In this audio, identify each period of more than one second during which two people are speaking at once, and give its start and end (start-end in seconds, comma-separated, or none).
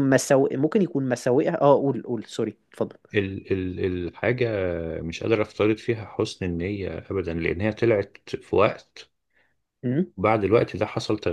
none